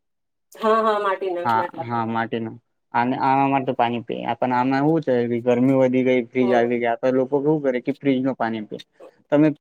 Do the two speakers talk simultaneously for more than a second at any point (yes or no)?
no